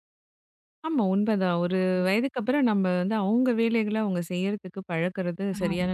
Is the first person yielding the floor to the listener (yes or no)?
yes